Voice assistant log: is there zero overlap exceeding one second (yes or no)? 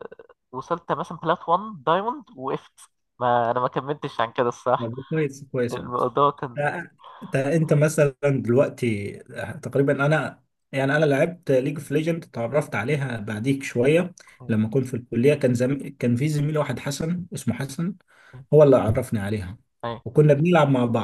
yes